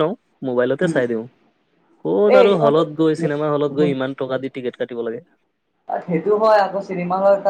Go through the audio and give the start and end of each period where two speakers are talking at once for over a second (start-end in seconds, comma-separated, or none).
2.4-3.9